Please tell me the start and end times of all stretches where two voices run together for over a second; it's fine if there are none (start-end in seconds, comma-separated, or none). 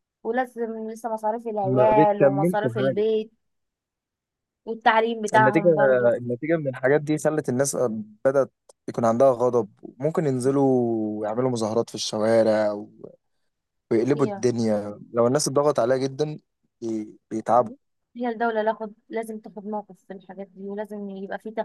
1.6-3.0